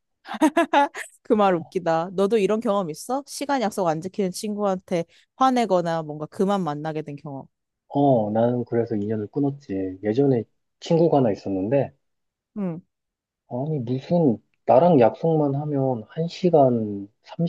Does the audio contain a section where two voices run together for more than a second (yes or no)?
no